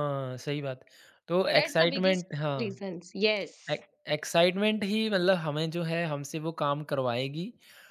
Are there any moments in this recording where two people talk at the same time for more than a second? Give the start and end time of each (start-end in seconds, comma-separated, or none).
1.6-2.8